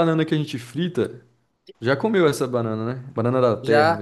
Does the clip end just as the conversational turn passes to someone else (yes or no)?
yes